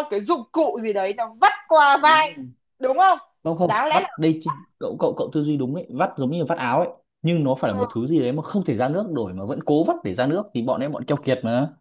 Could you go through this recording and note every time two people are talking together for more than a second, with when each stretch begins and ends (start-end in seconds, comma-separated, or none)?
none